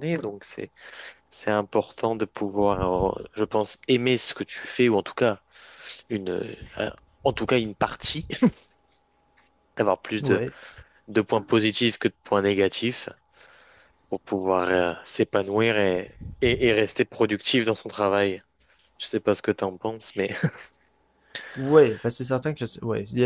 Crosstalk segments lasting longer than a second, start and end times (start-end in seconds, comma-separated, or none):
none